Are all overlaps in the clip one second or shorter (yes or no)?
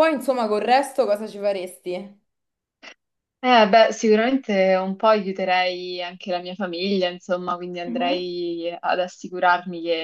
yes